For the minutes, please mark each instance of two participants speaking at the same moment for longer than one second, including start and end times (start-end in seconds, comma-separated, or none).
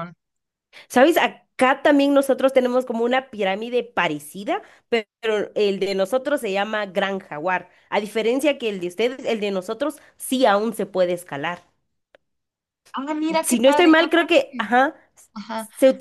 13.4-14.7